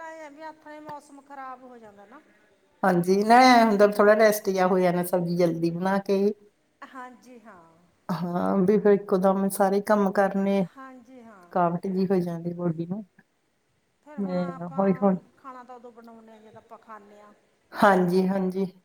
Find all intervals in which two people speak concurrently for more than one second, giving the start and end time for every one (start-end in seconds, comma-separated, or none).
none